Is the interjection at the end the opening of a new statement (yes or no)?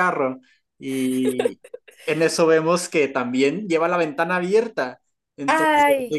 no